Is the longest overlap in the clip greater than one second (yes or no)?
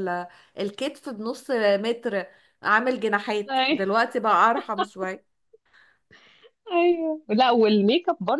no